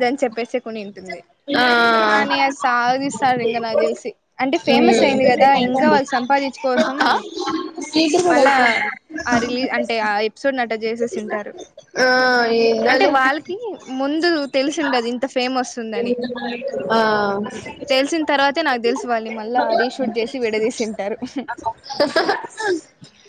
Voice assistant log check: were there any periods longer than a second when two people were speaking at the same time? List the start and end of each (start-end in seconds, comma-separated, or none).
none